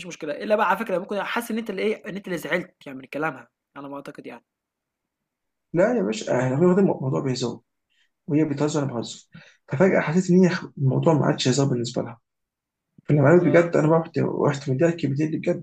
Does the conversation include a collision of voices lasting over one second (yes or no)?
no